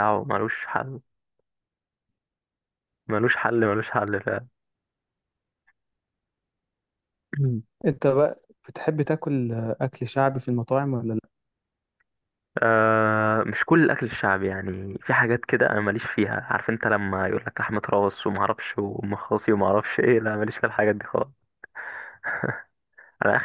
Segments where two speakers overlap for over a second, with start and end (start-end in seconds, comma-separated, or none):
none